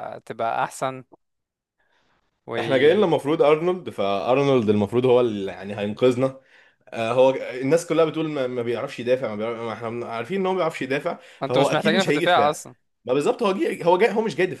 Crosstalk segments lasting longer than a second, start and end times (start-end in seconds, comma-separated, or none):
11.4-12.6